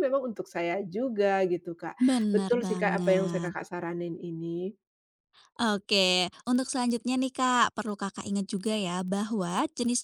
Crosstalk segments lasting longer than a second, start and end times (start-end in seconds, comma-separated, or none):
2.0-3.5